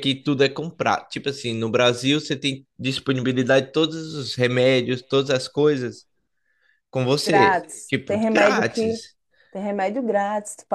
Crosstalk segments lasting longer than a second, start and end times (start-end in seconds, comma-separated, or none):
7.2-9.0